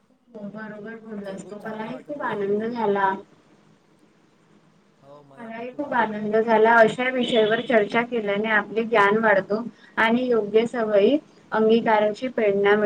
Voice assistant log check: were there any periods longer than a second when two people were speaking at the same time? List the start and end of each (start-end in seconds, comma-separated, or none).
1.3-2.8